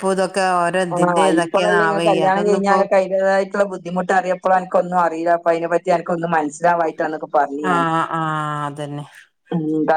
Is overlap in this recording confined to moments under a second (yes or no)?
no